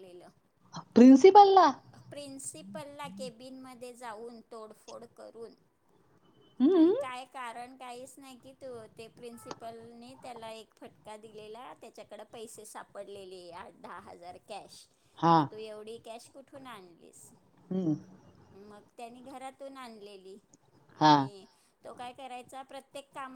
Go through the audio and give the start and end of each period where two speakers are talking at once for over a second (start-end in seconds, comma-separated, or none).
none